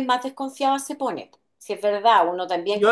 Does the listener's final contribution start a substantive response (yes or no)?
no